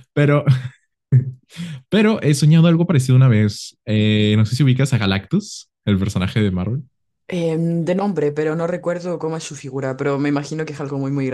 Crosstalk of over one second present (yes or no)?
no